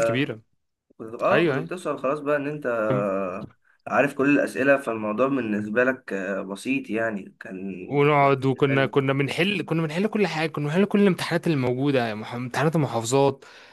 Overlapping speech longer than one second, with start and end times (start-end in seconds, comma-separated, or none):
none